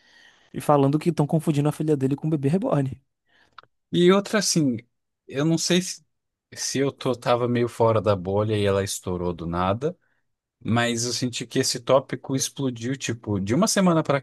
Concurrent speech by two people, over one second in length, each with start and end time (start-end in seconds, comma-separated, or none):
none